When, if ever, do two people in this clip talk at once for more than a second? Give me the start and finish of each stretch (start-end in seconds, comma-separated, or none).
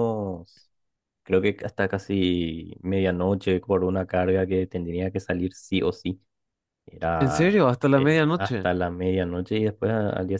7.2-8.7